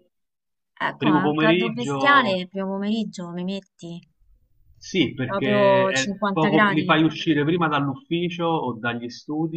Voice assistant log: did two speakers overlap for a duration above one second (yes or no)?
yes